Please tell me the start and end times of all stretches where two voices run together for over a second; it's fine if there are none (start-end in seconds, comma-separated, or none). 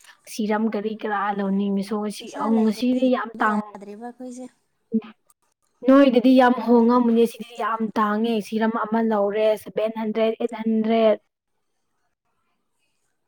2.2-3.6